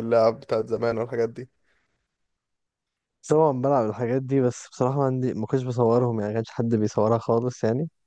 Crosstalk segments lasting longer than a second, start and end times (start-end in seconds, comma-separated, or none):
none